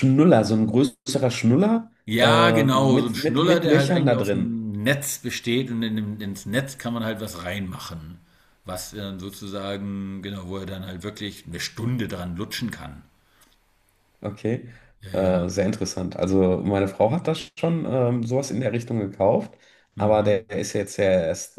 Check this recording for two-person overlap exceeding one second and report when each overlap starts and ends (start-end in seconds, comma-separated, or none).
2.0-4.6